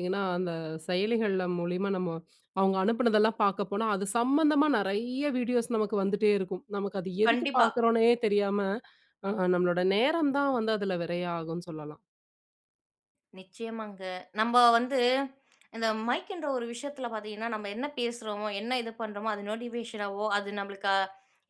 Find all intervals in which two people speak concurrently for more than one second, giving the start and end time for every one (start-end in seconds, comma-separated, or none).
none